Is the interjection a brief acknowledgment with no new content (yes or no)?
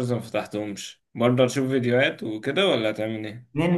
no